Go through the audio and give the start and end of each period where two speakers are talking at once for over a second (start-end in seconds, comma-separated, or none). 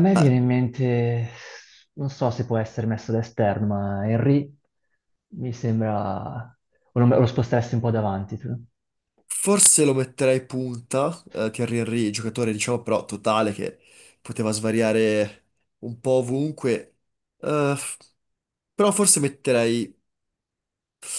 none